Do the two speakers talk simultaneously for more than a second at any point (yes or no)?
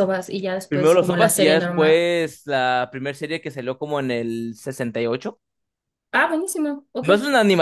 yes